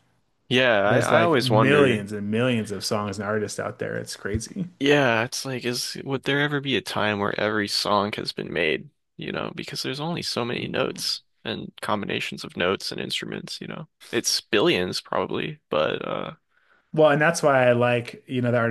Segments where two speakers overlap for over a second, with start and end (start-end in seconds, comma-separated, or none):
0.8-2.1